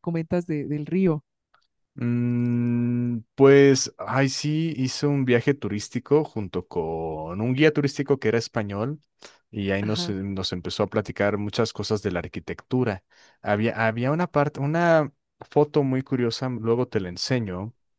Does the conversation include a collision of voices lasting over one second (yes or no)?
no